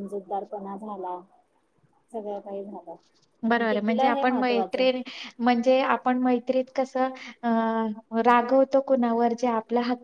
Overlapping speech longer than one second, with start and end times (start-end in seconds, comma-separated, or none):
3.5-4.8